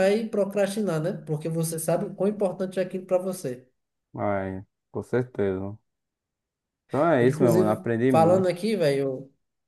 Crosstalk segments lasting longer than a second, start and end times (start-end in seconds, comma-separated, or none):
7.2-8.6